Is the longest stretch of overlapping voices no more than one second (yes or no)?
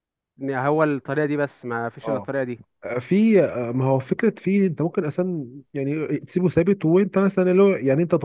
yes